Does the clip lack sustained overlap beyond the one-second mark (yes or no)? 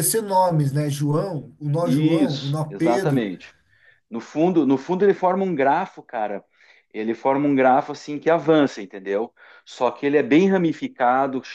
no